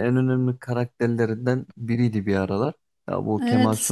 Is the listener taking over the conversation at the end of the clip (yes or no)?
yes